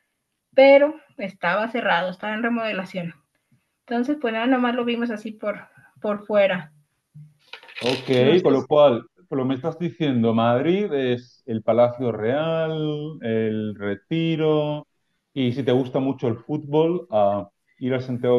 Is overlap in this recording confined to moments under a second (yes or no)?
yes